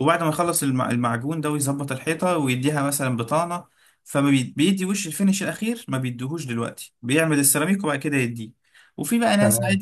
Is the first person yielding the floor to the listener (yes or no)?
no